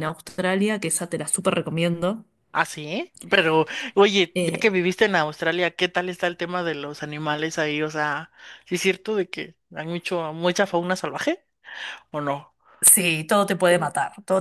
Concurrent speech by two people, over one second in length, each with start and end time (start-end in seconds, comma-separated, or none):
none